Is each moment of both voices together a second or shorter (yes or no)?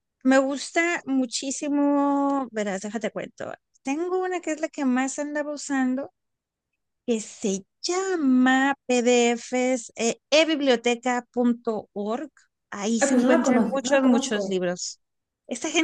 no